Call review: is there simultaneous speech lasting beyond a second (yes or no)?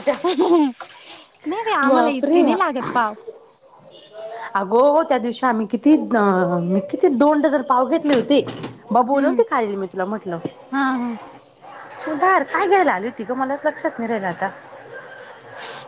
no